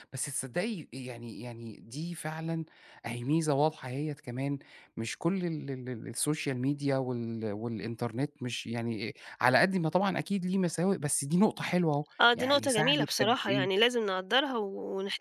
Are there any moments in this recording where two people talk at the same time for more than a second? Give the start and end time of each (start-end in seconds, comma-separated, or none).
12.2-13.8